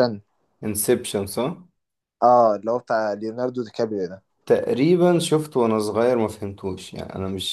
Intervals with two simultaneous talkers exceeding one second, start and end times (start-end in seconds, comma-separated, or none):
none